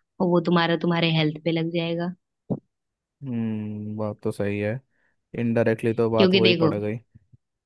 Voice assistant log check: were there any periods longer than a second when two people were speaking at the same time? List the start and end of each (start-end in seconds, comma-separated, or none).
none